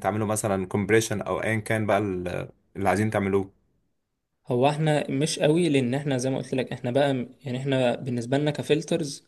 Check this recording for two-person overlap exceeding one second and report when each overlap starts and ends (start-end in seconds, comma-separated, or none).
none